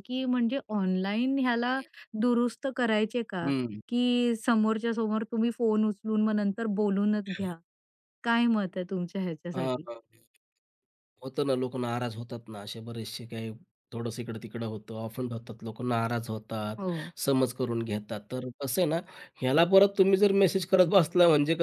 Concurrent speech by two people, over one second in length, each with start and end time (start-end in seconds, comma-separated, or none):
none